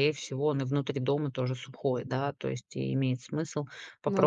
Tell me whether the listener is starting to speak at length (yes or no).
no